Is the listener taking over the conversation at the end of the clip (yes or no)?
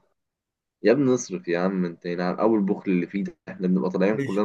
no